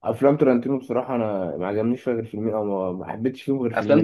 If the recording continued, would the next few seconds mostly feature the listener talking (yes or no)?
yes